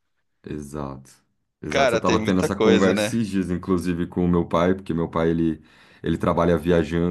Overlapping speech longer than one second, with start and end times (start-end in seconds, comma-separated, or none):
1.7-3.2